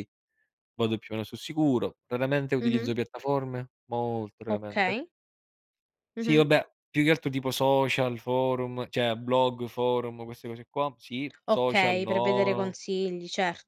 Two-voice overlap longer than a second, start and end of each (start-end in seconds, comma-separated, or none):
11.5-12.8